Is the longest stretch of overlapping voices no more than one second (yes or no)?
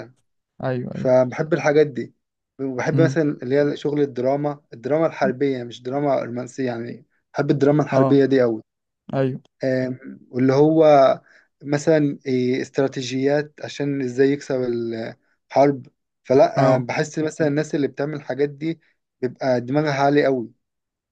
yes